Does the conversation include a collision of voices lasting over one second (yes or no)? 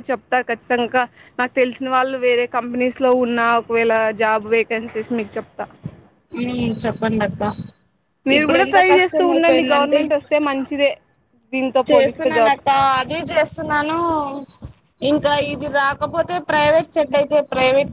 yes